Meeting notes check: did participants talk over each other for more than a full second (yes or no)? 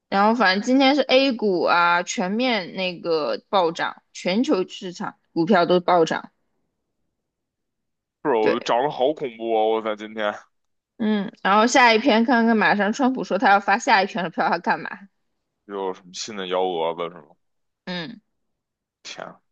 no